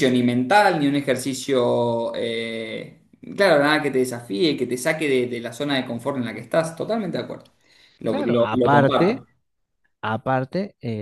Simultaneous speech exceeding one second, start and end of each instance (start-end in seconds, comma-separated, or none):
8.1-9.2